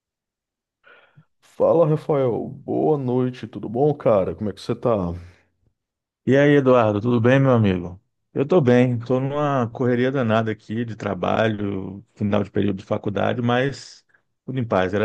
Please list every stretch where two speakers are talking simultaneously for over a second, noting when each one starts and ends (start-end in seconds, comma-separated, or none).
none